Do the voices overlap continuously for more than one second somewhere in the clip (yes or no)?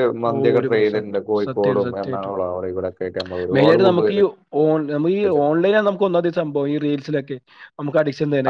yes